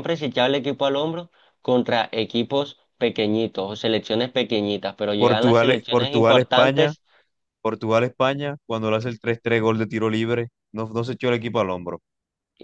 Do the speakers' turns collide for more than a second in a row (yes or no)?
yes